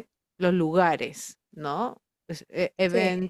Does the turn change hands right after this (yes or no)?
no